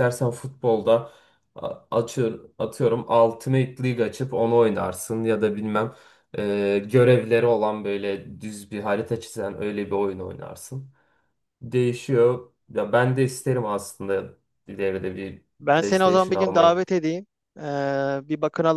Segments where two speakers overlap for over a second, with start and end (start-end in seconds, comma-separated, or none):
15.6-16.8